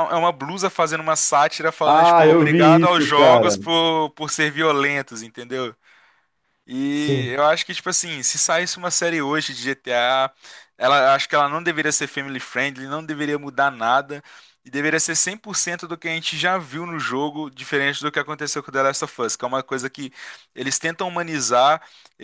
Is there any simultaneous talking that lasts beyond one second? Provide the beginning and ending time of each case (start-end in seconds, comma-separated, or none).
1.9-3.6